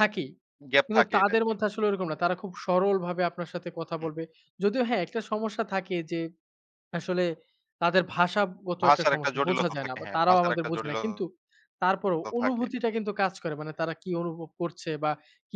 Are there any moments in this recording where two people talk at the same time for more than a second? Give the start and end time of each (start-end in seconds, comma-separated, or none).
8.8-11.0